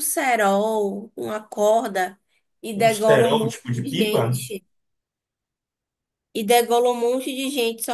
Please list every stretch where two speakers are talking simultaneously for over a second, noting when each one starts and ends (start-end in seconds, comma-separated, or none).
2.7-4.4